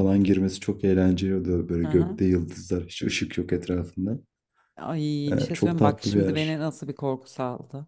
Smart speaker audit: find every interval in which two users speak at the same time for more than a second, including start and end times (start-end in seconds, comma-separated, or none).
5.3-6.6